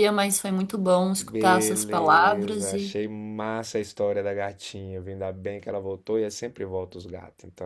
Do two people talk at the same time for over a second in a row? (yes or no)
yes